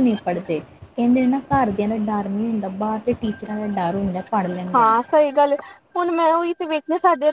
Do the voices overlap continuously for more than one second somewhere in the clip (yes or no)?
no